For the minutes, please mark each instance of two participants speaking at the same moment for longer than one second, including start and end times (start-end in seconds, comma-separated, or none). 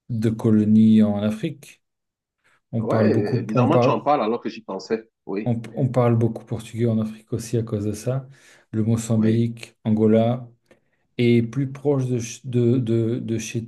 2.8-4.0